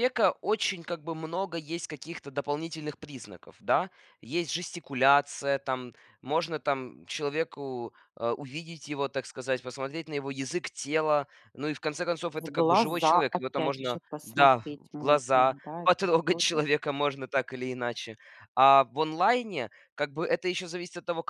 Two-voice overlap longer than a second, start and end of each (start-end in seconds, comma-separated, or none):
12.4-16.6